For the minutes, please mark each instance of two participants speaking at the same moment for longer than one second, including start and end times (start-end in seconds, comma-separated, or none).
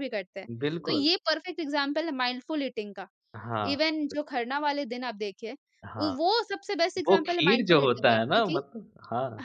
7.1-8.6